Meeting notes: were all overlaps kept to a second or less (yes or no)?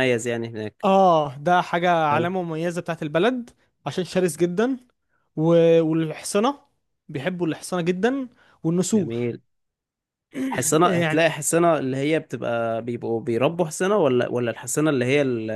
yes